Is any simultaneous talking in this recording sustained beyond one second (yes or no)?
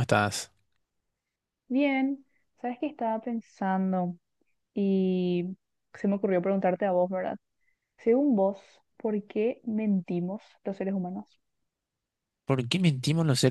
no